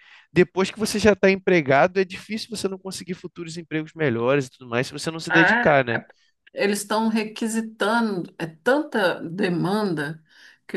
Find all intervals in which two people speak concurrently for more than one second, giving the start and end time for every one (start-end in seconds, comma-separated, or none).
none